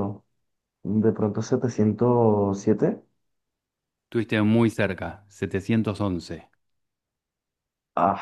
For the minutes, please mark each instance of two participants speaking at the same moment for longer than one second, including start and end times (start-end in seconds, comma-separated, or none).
none